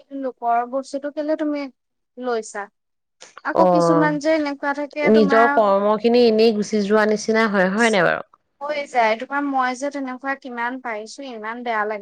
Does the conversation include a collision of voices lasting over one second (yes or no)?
yes